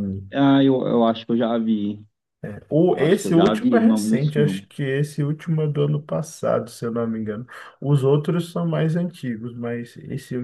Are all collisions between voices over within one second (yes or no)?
no